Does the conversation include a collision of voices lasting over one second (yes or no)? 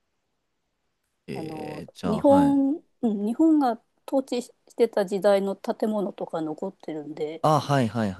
yes